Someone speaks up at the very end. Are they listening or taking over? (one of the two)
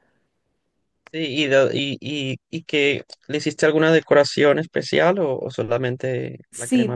taking over